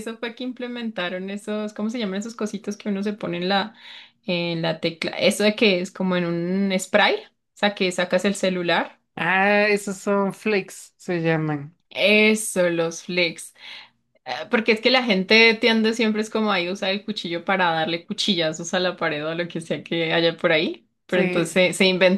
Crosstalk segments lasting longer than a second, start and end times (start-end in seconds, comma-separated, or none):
none